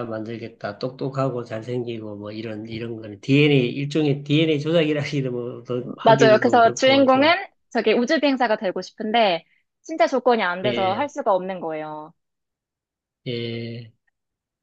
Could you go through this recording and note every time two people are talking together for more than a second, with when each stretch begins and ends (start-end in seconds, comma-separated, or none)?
6.0-7.3